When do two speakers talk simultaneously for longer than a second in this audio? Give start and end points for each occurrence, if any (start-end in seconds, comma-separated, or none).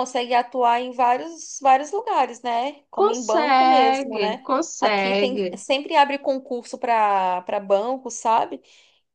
3.0-5.5